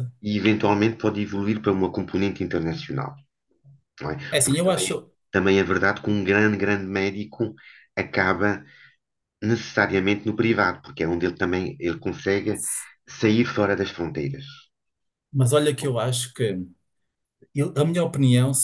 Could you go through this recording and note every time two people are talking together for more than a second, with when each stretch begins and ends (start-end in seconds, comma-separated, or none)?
none